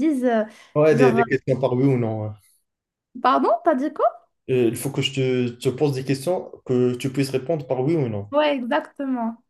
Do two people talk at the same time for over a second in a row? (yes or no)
no